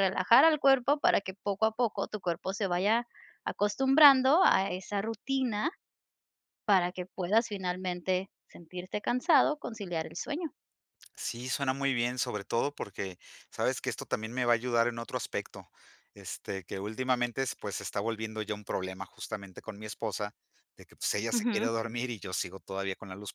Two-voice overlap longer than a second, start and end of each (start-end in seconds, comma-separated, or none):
none